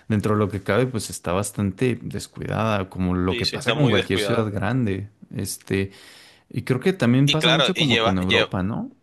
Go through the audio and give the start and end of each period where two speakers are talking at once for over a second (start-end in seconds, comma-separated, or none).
3.3-4.5, 7.2-8.5